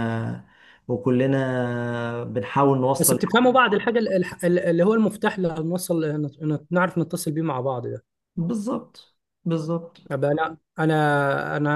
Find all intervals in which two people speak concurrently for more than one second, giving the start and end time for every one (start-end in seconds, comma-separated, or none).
none